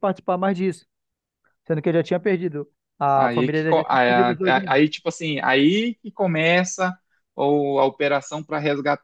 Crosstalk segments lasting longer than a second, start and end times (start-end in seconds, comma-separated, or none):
3.1-4.8